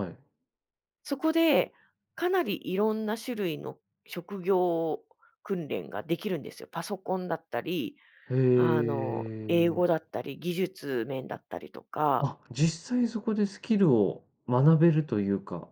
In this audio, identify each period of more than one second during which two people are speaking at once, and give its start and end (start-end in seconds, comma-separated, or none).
8.5-9.8